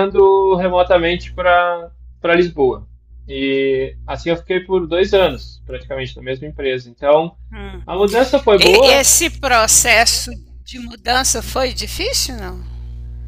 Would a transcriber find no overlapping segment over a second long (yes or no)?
yes